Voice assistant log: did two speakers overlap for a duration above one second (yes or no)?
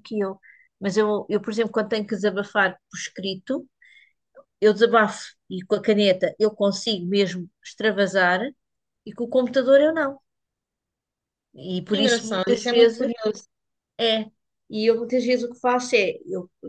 yes